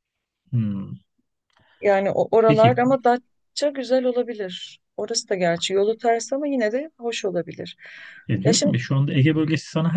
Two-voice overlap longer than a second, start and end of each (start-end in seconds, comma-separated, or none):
none